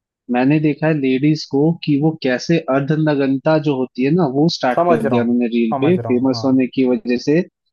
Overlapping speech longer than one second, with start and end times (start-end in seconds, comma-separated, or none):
4.8-6.6